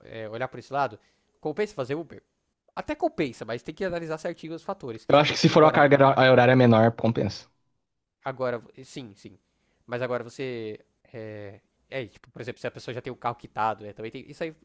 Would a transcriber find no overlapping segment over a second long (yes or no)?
yes